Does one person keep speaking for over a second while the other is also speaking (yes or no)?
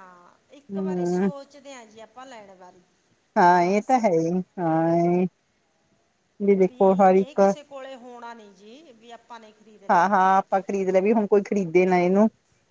no